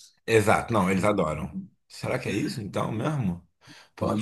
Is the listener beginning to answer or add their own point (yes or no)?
no